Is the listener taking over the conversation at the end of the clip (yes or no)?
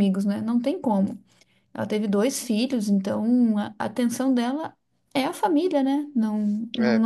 no